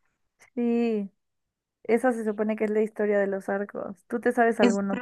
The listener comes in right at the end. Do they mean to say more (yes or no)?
yes